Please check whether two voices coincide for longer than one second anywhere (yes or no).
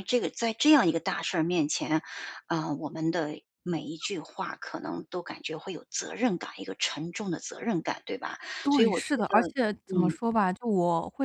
yes